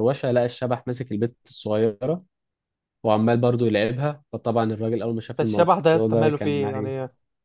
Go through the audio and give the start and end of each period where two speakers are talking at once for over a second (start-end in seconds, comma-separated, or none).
5.4-7.0